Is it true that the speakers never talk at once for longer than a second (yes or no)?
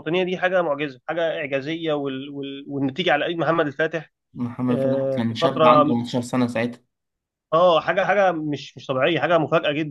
no